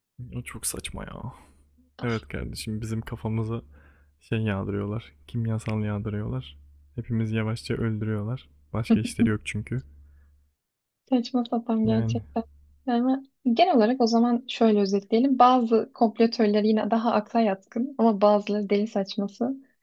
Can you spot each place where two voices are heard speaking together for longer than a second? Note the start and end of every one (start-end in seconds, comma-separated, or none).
none